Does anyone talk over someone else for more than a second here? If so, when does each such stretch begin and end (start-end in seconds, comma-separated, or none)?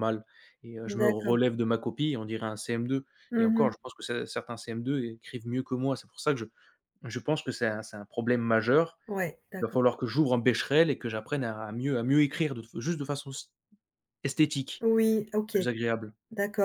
none